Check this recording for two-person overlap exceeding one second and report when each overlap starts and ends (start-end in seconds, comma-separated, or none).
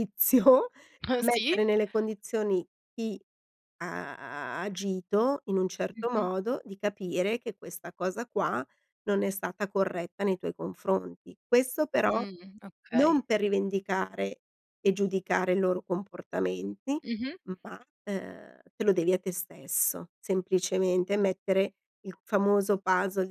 none